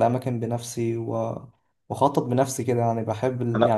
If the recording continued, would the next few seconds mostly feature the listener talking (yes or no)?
no